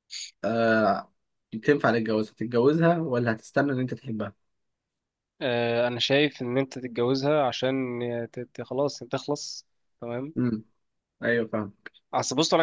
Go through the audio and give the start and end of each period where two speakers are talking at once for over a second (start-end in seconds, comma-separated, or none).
none